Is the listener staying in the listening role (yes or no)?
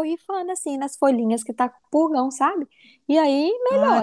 no